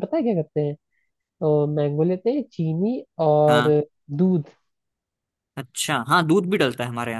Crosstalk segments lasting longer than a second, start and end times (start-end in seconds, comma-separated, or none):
none